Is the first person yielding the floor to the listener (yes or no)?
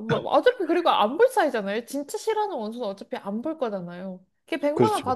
no